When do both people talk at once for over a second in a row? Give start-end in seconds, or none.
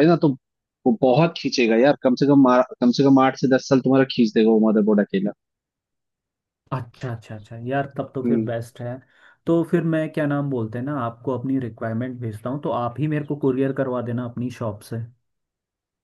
none